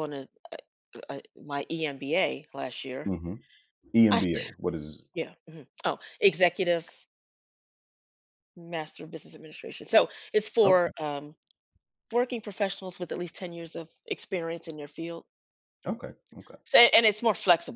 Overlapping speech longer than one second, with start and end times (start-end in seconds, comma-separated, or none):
none